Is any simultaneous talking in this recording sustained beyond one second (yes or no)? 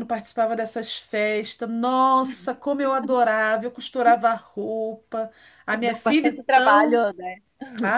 yes